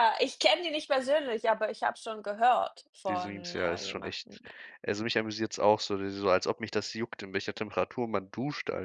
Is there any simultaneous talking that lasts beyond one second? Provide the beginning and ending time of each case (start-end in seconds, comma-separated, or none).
3.1-4.4